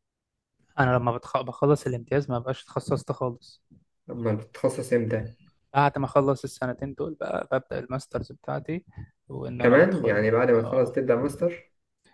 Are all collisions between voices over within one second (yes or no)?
no